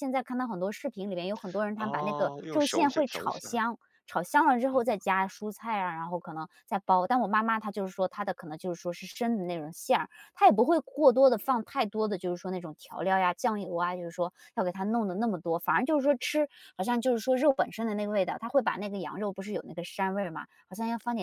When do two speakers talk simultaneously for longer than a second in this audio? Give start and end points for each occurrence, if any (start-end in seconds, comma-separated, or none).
1.8-3.6